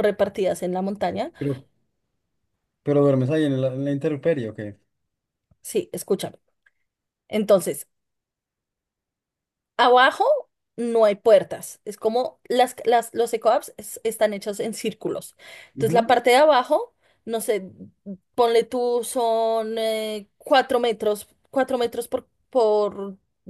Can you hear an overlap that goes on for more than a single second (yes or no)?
no